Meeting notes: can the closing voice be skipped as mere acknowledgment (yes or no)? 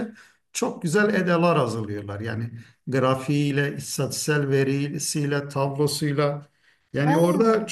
yes